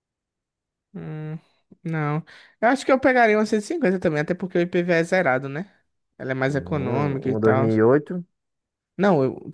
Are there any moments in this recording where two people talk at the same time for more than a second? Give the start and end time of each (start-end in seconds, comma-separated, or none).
6.5-7.7